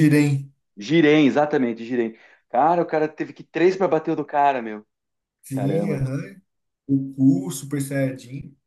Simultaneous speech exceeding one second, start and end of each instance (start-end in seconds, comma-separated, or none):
none